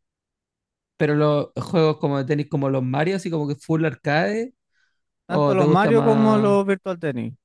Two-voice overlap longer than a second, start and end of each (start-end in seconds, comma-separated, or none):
5.3-6.6